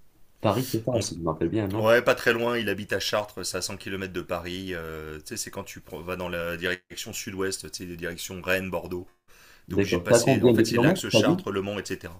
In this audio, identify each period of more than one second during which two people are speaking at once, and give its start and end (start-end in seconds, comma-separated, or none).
9.7-11.4